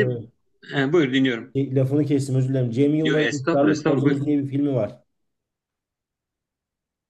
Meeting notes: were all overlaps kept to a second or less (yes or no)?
no